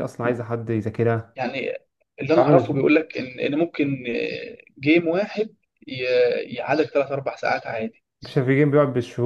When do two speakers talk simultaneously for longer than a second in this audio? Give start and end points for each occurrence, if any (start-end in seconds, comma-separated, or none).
none